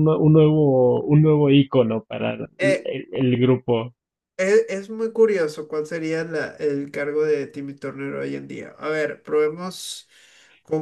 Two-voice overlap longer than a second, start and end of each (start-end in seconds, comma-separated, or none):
none